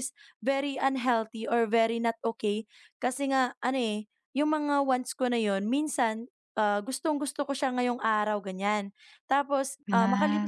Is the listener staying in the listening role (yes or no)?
yes